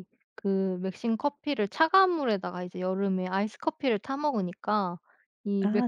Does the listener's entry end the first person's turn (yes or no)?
no